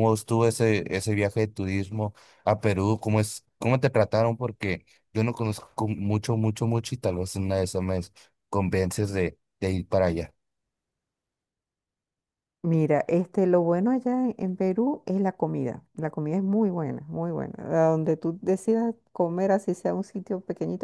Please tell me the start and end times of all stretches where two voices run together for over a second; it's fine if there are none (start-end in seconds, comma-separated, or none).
none